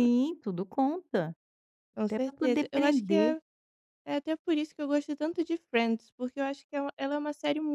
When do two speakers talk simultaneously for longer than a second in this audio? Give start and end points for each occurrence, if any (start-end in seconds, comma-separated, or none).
2.1-3.3